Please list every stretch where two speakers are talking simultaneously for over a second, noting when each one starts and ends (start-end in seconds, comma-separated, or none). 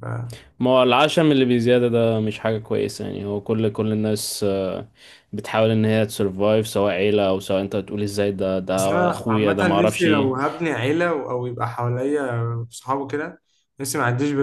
8.7-10.3